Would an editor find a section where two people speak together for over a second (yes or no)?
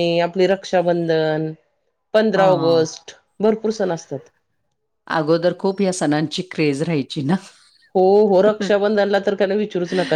no